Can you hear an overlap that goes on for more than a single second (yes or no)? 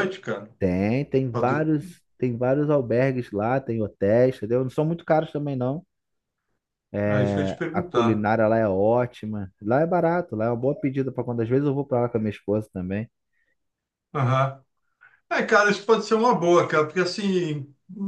yes